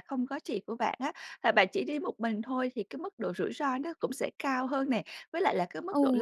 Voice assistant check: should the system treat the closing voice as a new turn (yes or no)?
no